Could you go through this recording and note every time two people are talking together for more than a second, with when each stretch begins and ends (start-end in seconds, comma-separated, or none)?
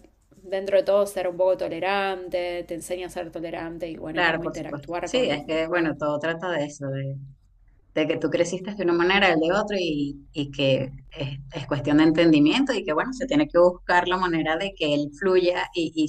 4.1-5.4